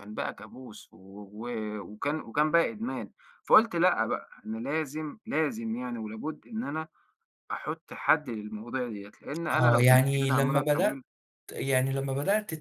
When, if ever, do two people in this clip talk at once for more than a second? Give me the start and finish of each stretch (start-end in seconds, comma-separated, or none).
9.5-11.0